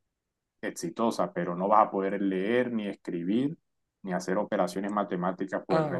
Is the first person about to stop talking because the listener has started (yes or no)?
yes